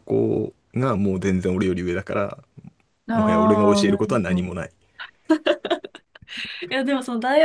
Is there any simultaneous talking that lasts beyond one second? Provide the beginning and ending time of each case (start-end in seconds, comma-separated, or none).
3.1-4.5